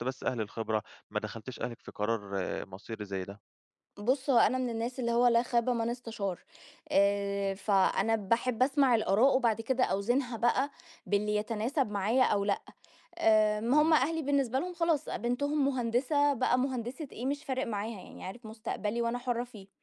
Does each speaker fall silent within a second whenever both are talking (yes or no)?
yes